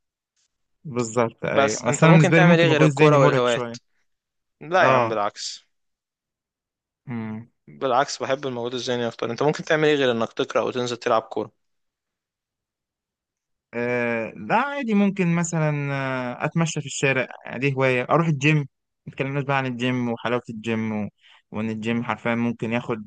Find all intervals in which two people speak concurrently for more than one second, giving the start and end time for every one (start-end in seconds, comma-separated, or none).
1.5-3.8